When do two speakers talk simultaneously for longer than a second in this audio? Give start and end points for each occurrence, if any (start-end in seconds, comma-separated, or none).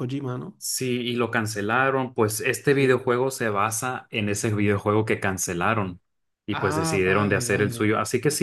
6.5-7.9